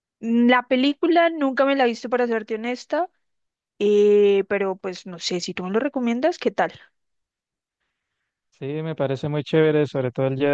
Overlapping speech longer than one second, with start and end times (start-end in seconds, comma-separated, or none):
none